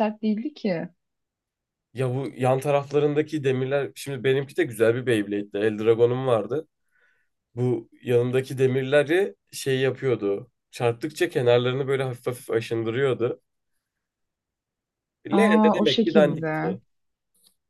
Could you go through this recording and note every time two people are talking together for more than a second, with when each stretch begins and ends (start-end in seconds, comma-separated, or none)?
15.3-16.8